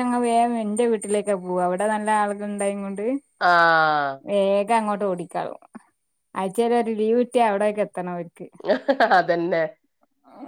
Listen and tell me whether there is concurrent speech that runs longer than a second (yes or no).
no